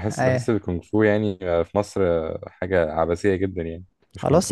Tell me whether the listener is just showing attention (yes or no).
no